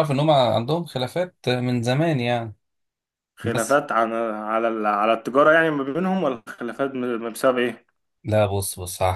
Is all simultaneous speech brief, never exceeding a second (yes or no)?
yes